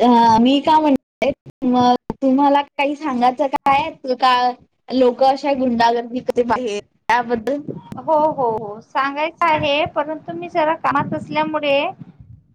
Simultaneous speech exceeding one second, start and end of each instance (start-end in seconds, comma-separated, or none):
none